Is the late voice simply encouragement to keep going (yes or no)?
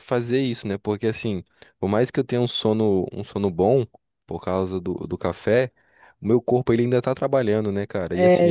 no